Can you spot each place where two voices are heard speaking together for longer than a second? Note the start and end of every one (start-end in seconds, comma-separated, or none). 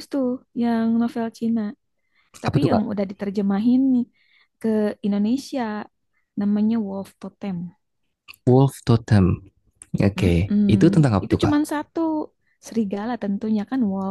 none